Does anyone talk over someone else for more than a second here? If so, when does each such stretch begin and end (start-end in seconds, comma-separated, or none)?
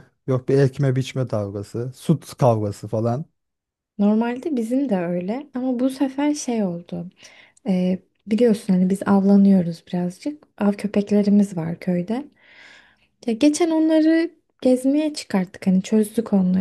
none